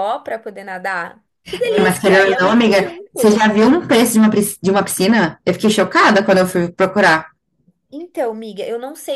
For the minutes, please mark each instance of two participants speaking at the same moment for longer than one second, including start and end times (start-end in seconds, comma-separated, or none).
1.6-3.5